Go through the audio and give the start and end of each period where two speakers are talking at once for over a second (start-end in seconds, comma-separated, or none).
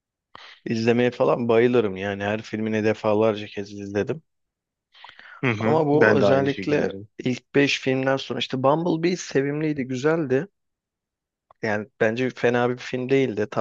5.6-7.1